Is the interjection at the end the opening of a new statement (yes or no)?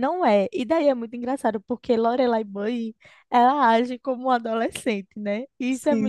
no